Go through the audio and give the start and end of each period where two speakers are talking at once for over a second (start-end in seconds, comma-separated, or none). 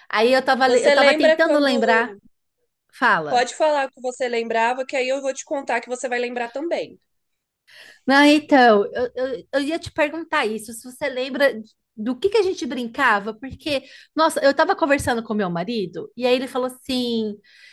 0.6-2.1